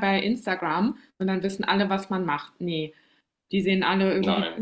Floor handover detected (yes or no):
no